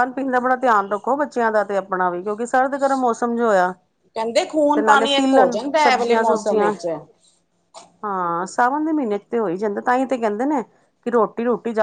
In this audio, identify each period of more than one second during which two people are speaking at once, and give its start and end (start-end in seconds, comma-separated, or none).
4.8-6.7